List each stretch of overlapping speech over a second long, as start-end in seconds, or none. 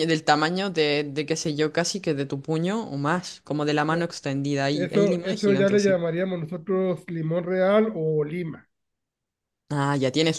4.7-6.0